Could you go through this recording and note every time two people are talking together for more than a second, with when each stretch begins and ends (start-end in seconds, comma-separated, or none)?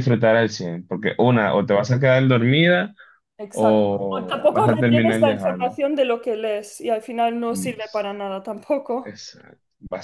3.5-5.7